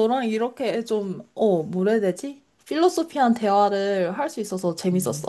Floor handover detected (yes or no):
yes